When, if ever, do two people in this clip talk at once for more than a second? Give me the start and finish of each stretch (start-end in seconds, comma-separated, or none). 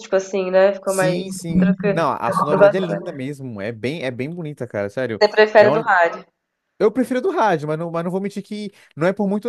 0.8-3.0